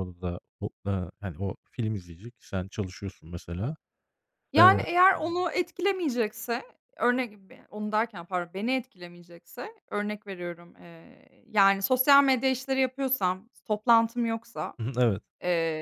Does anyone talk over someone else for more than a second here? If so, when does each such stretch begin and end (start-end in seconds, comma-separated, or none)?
none